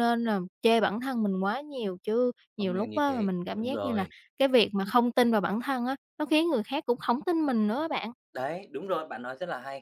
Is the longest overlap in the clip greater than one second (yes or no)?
yes